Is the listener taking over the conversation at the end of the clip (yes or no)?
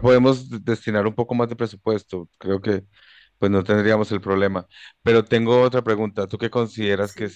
no